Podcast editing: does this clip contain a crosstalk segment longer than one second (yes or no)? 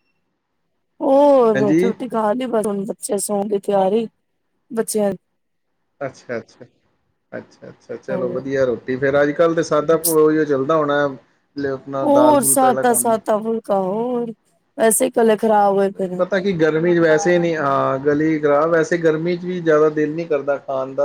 no